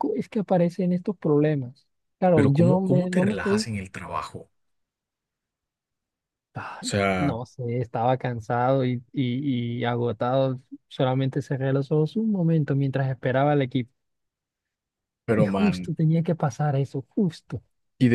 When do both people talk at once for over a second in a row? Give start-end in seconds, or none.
2.3-3.7